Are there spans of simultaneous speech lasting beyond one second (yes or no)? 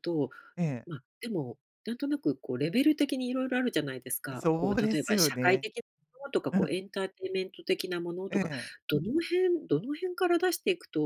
yes